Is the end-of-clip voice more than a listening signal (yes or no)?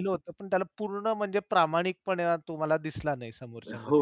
yes